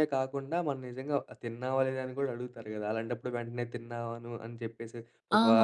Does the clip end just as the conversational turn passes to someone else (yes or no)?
yes